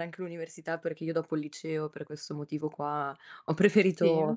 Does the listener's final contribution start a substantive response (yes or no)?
no